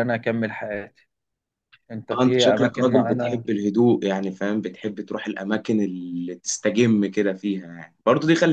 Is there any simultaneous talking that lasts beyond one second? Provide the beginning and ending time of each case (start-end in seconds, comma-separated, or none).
2.1-3.4